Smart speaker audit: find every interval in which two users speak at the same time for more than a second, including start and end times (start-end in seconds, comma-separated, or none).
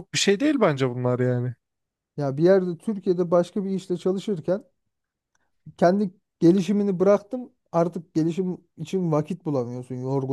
none